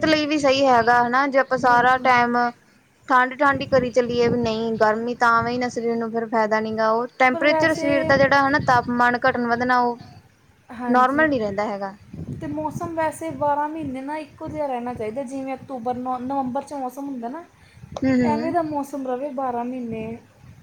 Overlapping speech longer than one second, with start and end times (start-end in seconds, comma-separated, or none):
none